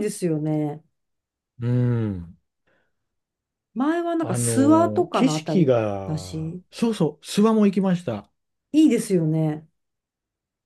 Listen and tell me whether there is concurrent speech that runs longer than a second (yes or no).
yes